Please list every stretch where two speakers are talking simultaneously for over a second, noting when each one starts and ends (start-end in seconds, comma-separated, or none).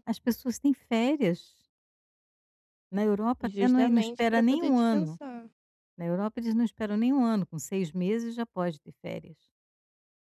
3.4-5.2